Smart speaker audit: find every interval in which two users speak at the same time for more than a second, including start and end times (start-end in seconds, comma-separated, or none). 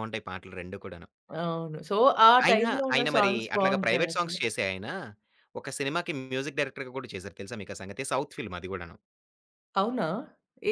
2.5-4.4